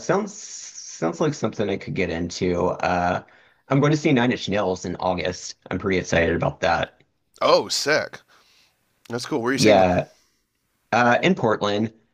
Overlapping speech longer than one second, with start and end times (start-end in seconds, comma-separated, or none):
none